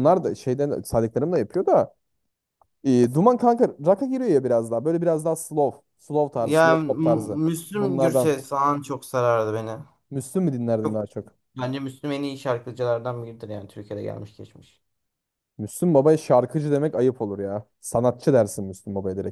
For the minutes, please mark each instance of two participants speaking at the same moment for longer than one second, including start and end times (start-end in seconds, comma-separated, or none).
6.3-8.3